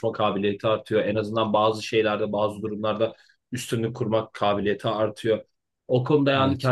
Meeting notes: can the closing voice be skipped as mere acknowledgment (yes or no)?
yes